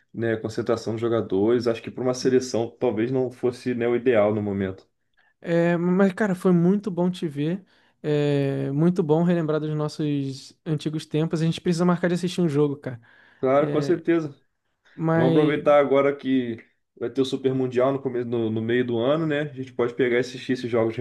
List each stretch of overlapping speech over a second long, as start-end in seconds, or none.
none